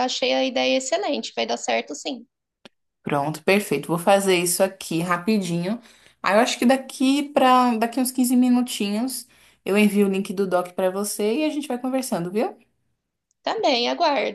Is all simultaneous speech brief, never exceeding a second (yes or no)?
yes